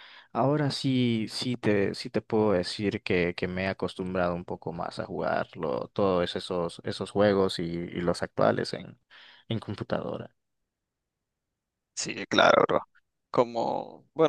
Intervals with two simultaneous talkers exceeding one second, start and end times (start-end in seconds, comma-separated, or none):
none